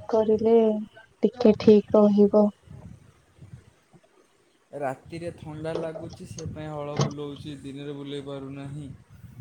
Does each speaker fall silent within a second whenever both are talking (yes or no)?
yes